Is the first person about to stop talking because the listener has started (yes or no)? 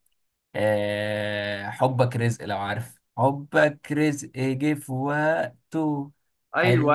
yes